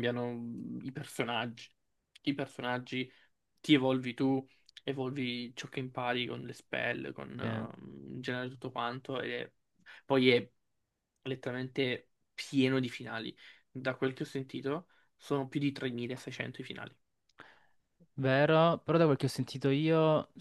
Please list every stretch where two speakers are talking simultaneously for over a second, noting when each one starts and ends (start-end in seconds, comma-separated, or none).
none